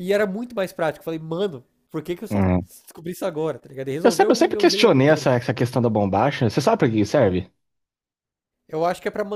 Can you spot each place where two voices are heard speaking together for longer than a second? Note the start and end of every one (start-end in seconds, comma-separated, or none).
4.0-5.3